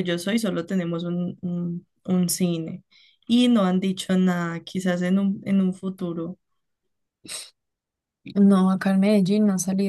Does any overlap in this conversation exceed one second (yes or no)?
no